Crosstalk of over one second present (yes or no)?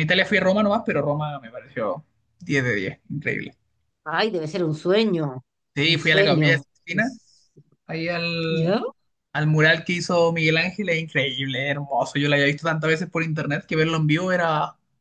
yes